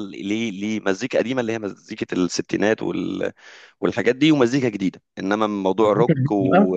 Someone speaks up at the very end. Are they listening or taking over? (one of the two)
listening